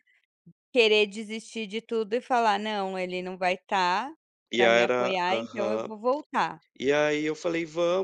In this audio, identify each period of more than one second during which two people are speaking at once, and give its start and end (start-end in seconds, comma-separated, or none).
4.5-5.9